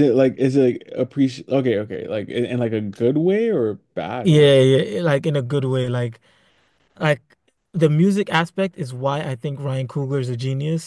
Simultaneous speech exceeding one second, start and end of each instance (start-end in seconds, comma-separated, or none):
none